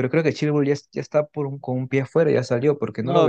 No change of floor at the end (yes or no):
no